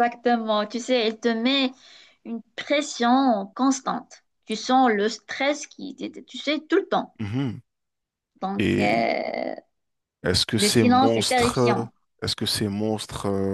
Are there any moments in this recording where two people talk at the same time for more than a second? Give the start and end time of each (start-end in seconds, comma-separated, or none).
10.6-11.9